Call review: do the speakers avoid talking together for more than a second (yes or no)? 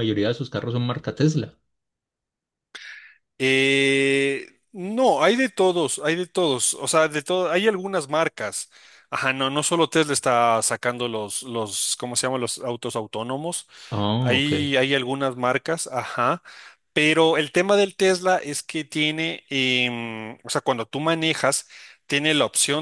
yes